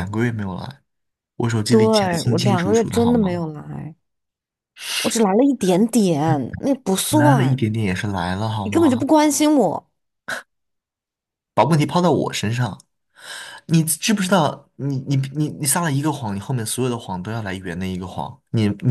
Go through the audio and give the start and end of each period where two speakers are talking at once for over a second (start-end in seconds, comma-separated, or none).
1.7-3.4